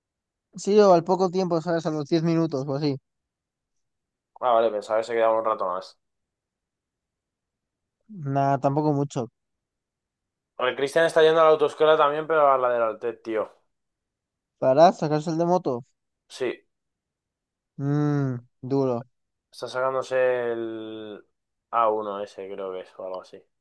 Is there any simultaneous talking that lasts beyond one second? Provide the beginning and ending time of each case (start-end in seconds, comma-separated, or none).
none